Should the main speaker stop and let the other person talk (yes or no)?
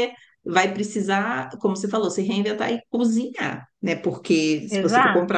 no